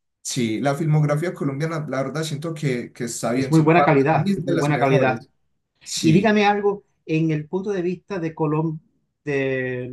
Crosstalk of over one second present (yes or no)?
yes